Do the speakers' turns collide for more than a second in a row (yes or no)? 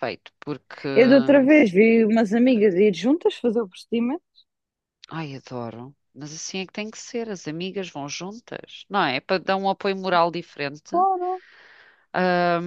no